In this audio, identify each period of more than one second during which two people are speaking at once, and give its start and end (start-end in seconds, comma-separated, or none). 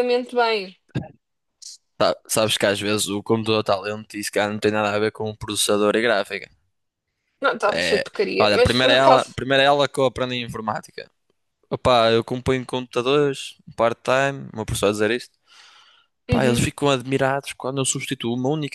7.7-9.4